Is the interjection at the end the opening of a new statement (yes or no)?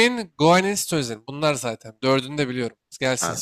yes